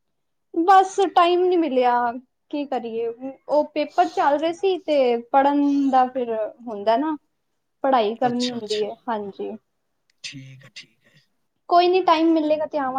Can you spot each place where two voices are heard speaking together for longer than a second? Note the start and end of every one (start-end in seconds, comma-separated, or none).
none